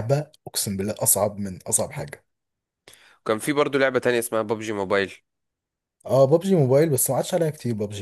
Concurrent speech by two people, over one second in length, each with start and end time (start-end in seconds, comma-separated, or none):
none